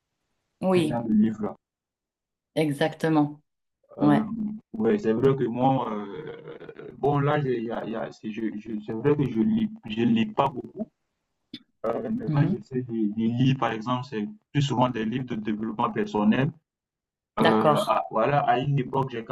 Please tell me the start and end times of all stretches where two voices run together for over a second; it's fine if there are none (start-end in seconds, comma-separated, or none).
none